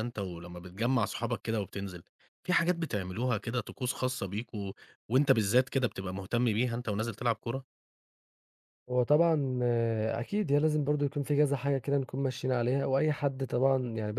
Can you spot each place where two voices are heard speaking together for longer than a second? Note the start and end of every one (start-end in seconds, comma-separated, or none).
none